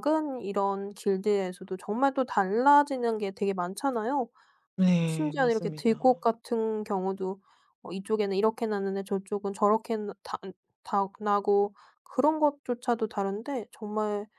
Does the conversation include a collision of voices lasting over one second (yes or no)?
yes